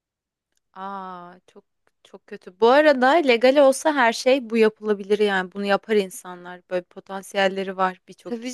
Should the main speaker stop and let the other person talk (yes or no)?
yes